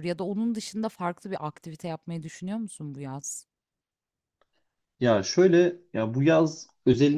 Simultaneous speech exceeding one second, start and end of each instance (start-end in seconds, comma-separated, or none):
none